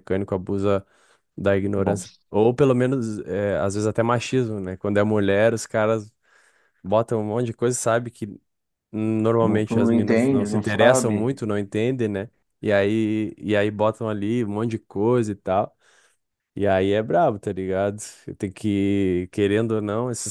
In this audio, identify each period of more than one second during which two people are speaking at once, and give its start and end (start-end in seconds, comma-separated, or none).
9.4-11.3